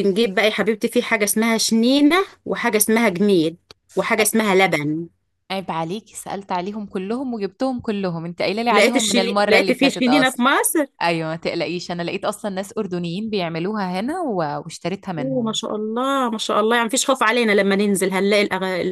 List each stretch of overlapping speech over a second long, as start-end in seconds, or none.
8.7-10.4